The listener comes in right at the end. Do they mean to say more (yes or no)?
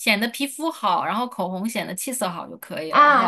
yes